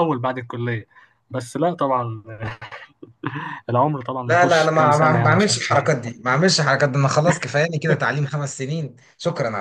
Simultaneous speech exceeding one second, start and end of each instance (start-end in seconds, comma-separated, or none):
4.2-5.5